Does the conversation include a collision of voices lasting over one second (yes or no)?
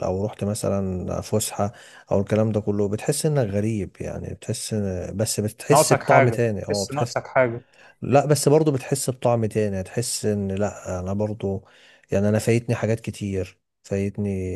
yes